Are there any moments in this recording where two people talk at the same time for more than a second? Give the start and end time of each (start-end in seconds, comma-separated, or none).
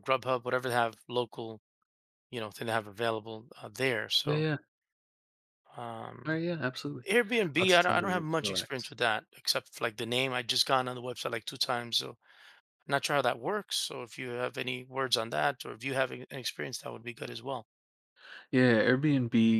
7.6-8.9